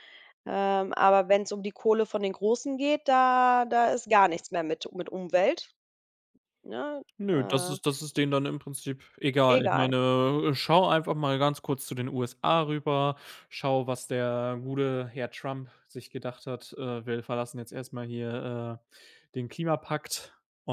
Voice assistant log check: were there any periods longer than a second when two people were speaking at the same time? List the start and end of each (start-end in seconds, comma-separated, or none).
none